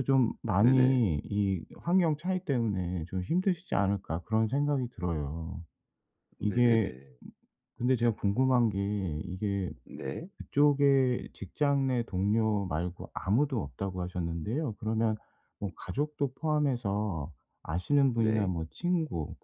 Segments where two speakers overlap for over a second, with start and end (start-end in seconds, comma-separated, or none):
none